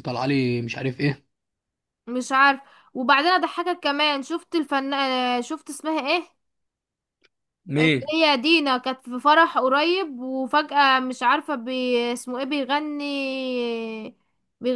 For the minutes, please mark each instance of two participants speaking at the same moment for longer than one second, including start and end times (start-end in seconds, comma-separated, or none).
none